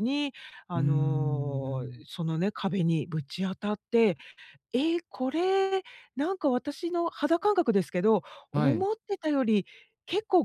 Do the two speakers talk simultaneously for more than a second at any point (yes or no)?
yes